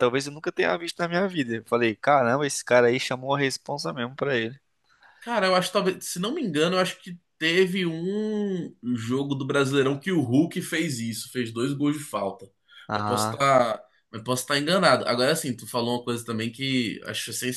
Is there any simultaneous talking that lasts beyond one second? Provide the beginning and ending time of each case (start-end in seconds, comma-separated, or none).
none